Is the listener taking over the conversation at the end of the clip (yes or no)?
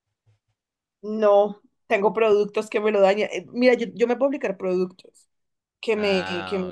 no